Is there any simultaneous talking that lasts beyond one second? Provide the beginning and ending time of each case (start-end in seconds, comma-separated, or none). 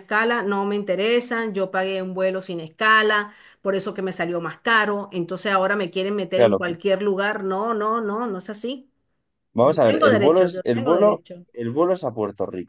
9.6-11.4